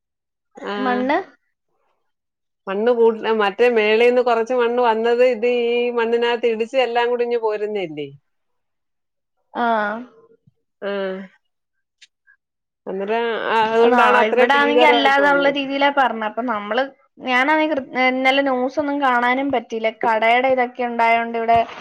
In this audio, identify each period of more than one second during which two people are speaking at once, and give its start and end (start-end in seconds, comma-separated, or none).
13.8-15.6